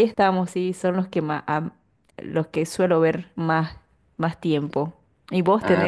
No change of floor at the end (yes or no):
yes